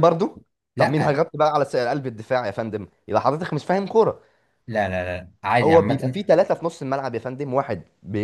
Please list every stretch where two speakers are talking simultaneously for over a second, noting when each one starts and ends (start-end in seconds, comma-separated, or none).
none